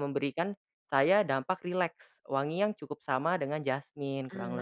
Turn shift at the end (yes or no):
yes